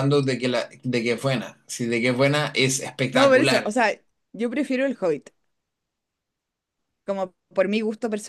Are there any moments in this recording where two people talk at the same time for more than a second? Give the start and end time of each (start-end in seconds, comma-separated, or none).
none